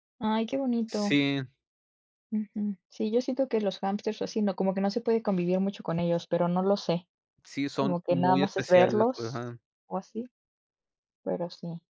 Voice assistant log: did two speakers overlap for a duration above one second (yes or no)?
yes